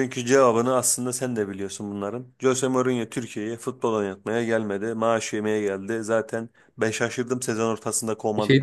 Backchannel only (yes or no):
no